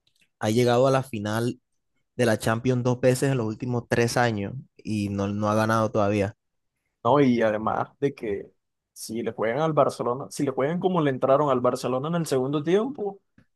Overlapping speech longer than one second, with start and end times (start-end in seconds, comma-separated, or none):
none